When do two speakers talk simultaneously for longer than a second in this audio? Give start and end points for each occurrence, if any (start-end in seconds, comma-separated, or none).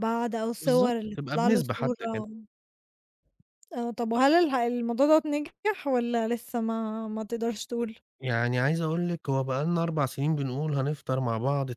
0.6-1.9